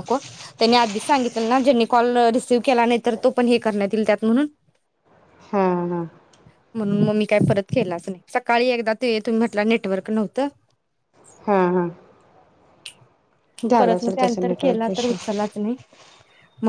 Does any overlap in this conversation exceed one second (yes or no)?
yes